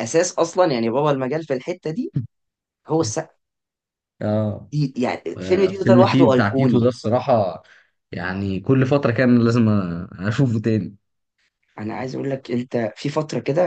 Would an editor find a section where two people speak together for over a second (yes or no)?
yes